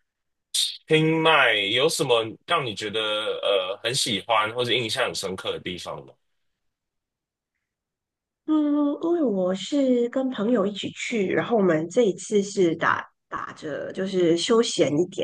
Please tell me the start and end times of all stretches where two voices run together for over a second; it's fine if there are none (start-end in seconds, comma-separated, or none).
none